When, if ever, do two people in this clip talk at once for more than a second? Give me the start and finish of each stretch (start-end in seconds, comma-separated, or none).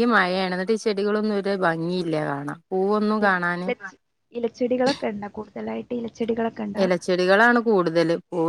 none